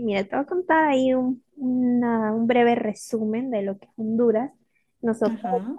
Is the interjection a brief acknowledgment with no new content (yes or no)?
yes